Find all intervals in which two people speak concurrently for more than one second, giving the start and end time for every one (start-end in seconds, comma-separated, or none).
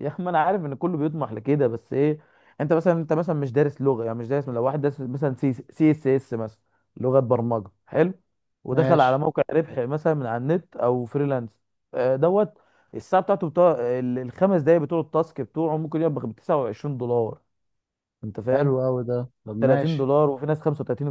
none